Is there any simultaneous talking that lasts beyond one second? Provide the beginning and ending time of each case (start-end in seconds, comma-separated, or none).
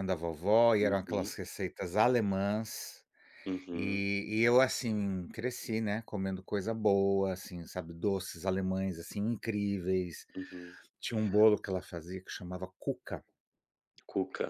none